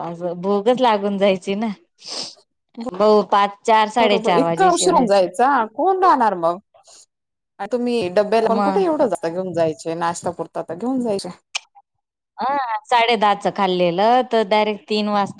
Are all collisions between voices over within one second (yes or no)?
no